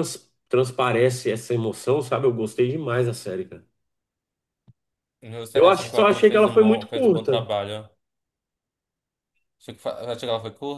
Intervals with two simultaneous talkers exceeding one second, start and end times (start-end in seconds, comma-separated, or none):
5.5-7.5